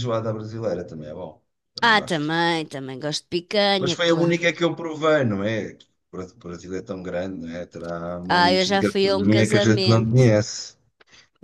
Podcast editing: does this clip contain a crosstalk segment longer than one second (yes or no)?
yes